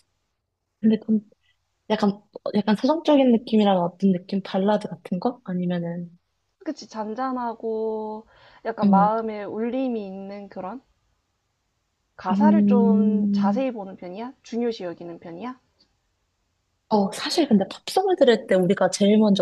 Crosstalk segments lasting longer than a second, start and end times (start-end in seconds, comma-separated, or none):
12.3-13.7